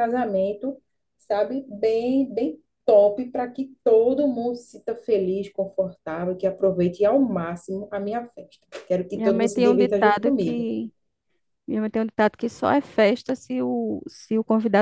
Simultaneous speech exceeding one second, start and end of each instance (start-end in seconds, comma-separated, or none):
9.1-10.7